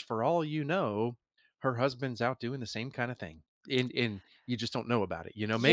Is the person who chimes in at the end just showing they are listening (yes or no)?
no